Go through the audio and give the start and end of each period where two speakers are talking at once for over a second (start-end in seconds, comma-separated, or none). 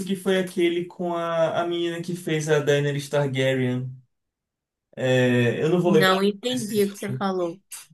5.8-7.2